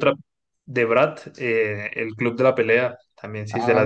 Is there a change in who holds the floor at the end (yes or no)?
yes